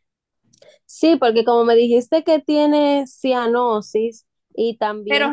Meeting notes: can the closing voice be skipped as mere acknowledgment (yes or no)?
no